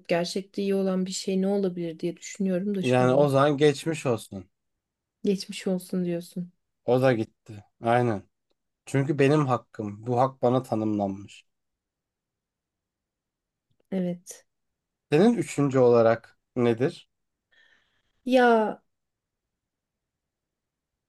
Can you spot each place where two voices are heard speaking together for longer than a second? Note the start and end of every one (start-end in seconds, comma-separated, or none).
none